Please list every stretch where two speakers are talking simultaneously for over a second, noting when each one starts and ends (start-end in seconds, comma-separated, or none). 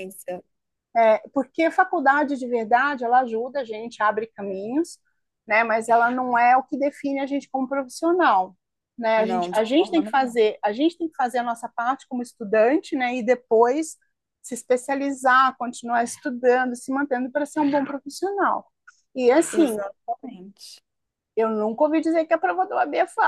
9.2-10.4